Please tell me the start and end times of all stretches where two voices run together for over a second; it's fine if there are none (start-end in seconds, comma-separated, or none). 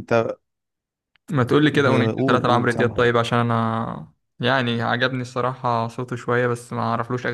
1.7-3.0